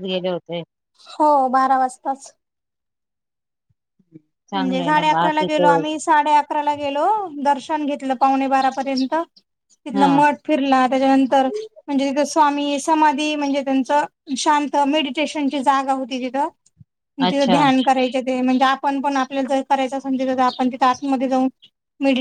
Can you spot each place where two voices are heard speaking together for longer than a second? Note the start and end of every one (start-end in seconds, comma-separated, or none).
4.5-5.8